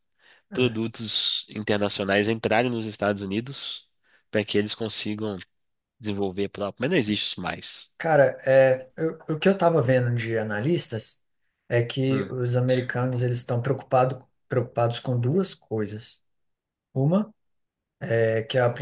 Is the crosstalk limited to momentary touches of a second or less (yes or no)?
yes